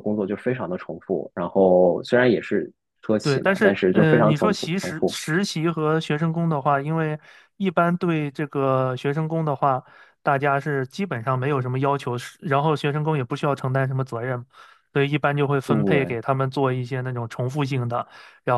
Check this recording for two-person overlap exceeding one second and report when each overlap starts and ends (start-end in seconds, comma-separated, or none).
3.2-5.2